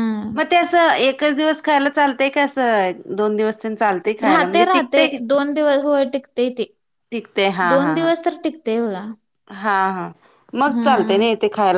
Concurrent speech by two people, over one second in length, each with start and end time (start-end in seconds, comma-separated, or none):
none